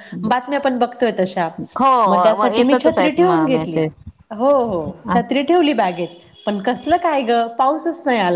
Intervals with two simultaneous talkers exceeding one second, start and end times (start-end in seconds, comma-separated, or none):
2.0-3.8